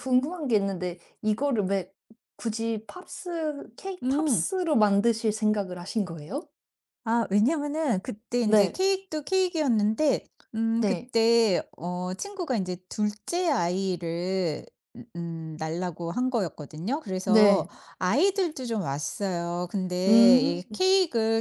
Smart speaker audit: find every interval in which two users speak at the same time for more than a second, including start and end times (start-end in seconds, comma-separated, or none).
none